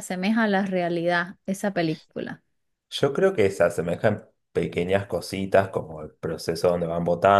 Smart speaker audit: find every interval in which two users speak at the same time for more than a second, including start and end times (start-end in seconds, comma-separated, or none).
none